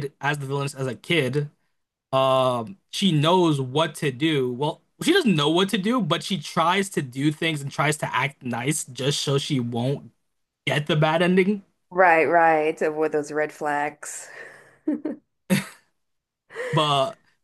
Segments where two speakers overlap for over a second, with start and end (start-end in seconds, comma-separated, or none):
none